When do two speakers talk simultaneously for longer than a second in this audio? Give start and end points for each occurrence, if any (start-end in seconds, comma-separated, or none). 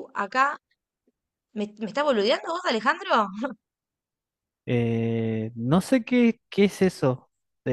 none